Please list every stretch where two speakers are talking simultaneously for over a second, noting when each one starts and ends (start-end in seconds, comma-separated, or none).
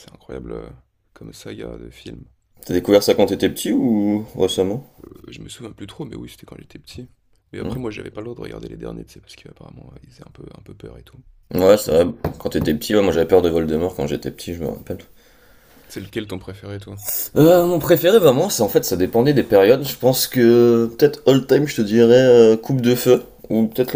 none